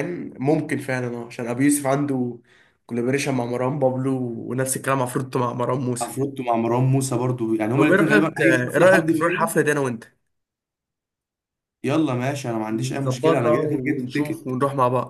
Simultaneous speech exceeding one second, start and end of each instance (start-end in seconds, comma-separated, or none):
7.7-9.6, 12.8-14.6